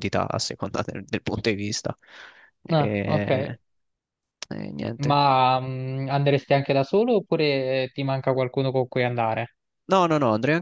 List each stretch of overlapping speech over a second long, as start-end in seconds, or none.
none